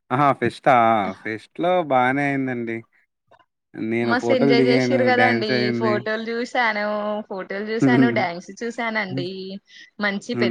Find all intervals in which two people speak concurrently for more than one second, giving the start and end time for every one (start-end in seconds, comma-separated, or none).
4.1-5.9